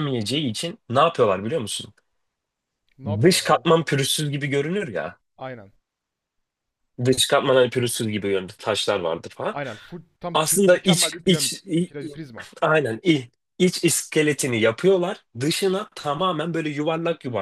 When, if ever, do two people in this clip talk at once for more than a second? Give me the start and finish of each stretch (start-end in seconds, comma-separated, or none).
10.3-12.2